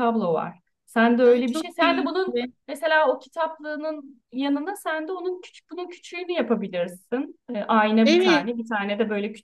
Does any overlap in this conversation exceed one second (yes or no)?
yes